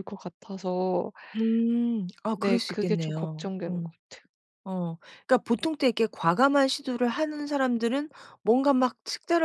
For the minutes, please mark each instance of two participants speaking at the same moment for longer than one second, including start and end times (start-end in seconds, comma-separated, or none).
2.3-3.9